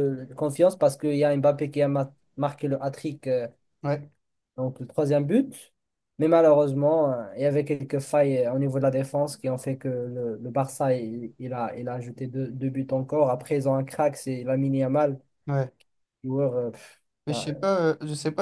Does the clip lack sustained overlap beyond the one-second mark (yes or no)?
yes